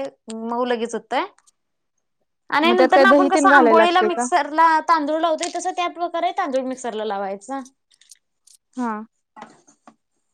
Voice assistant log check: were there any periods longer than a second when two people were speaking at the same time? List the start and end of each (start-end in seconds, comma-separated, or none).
2.7-4.2